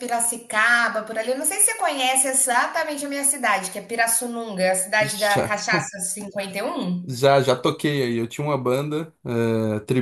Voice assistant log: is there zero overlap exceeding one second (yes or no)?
yes